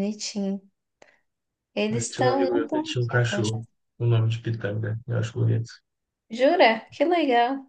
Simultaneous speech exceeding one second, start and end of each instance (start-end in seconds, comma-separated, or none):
1.9-3.6